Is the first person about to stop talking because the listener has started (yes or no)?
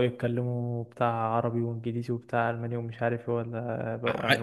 yes